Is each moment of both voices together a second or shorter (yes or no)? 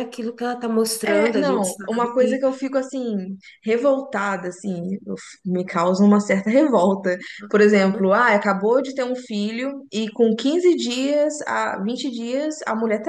no